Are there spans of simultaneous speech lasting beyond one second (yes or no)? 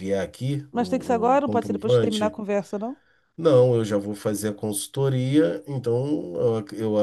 yes